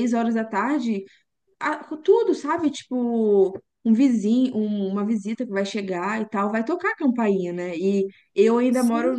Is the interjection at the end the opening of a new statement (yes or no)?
no